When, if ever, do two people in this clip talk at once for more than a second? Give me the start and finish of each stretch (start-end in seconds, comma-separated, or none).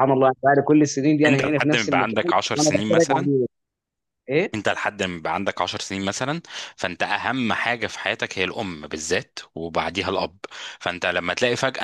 1.2-3.3